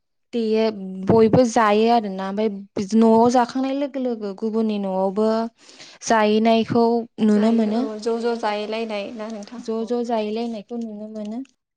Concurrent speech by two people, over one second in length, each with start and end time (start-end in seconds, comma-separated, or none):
none